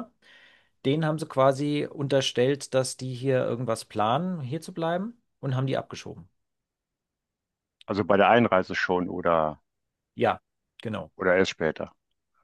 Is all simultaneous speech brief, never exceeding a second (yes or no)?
yes